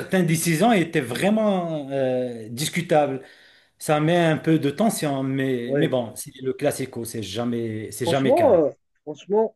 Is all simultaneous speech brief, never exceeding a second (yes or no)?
yes